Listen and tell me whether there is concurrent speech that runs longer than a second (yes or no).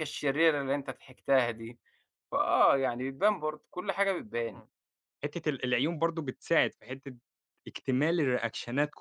no